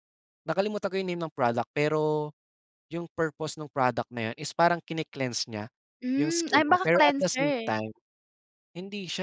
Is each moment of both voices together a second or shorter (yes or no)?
no